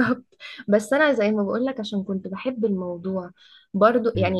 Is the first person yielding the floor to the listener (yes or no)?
no